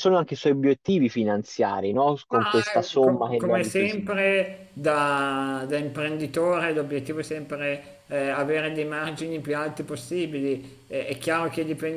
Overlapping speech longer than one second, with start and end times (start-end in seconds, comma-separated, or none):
2.3-4.1